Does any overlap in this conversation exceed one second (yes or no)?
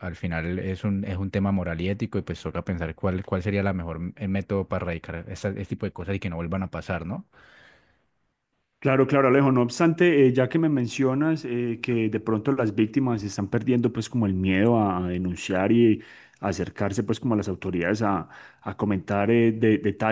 no